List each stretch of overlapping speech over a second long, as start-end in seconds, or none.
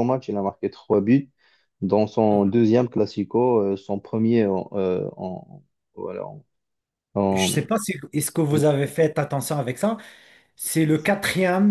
none